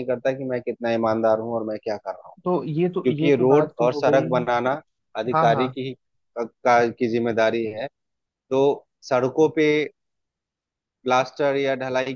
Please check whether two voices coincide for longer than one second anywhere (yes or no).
yes